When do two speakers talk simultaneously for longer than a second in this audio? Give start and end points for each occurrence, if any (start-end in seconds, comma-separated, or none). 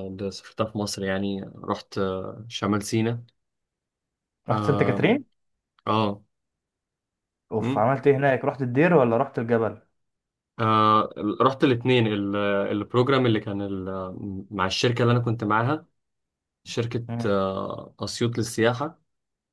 none